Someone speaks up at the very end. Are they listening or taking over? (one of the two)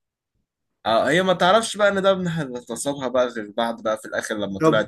taking over